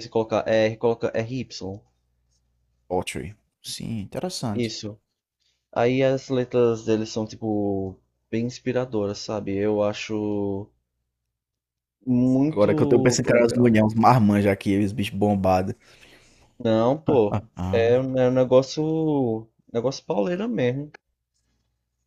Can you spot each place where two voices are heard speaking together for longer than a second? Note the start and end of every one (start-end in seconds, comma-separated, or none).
12.5-13.7